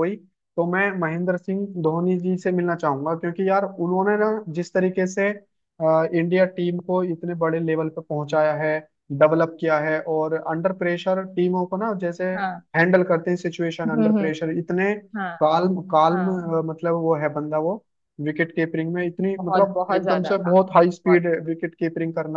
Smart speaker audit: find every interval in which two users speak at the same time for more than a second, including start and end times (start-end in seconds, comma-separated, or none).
19.4-21.2